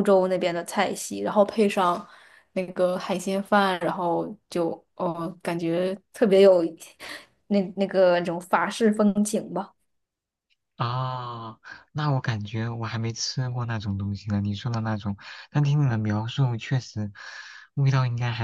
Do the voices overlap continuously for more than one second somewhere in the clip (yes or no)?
no